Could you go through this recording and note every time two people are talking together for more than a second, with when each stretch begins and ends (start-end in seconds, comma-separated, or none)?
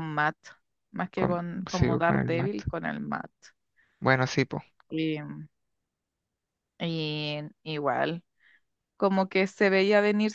1.1-2.6